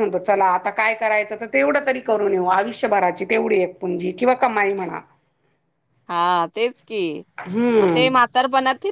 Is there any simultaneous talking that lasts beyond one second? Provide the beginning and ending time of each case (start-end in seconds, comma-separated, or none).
none